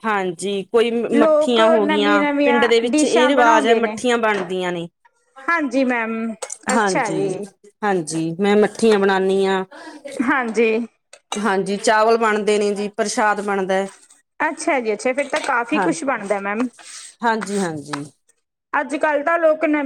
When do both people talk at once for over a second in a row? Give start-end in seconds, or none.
1.1-3.9